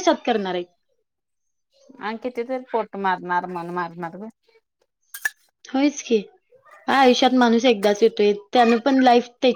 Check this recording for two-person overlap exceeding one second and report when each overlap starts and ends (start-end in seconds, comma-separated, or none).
none